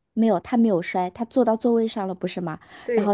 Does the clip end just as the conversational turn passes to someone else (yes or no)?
no